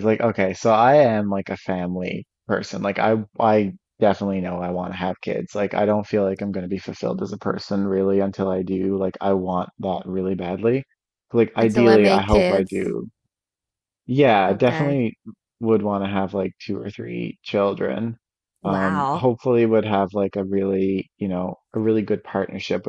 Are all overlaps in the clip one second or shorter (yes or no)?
no